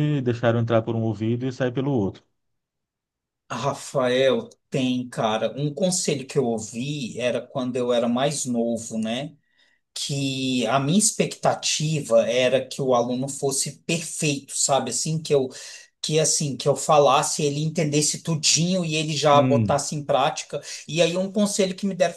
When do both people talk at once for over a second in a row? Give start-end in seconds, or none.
none